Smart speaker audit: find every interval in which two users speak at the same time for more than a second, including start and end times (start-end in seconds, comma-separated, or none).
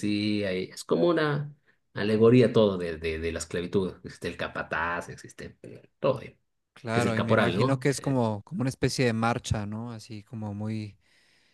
6.9-8.2